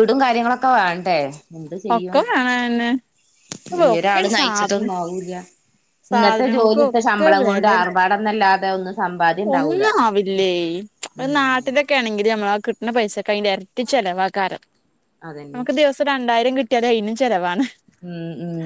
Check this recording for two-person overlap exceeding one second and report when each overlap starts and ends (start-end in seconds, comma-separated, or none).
6.1-7.7